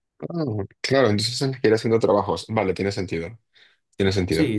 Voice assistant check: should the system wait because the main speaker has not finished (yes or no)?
no